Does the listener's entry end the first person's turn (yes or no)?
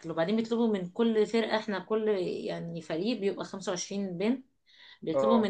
no